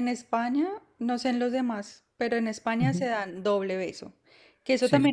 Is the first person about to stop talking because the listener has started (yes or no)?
no